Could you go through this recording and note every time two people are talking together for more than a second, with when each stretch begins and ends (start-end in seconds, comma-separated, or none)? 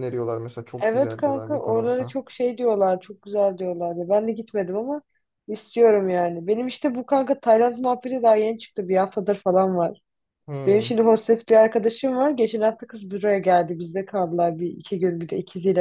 0.8-2.1